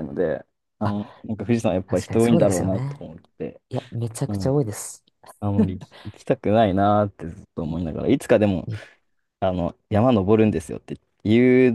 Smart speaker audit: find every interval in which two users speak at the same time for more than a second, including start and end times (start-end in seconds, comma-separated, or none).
1.9-3.0